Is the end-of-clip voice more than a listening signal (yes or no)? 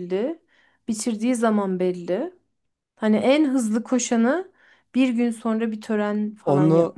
yes